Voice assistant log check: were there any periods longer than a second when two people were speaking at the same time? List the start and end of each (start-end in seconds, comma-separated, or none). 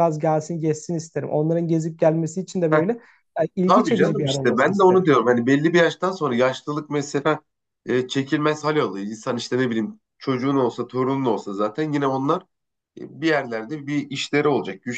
3.7-5.1